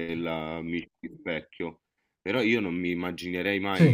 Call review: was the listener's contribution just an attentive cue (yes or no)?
yes